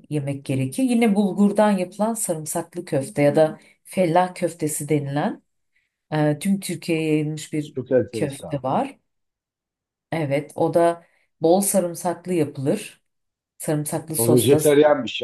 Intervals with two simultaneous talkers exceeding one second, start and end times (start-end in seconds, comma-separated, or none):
none